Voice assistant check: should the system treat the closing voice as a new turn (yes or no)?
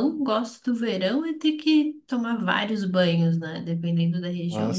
no